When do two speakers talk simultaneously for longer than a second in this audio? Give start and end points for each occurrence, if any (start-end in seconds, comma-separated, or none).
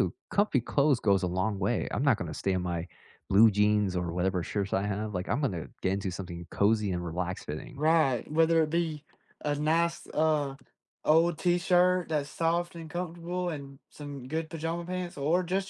none